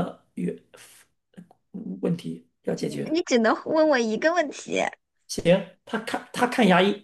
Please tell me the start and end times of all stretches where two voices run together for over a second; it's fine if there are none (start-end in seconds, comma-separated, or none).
none